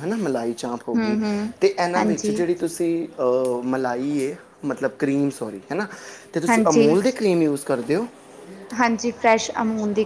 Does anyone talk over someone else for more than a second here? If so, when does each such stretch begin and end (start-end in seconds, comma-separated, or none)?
none